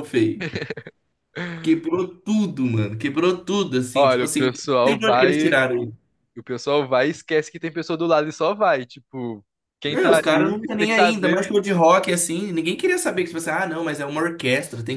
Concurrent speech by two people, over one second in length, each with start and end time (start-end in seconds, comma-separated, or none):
3.9-5.6, 9.8-11.5